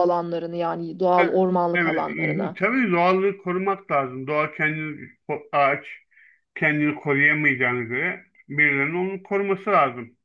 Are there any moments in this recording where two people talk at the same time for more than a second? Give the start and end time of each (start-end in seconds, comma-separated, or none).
1.2-2.6